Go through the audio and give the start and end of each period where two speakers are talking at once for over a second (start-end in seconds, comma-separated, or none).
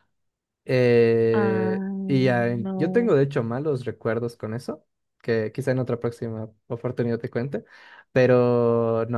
1.3-3.1